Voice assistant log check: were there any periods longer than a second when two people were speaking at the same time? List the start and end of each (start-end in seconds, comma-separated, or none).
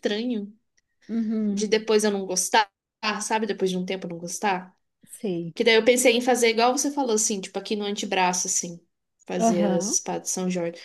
none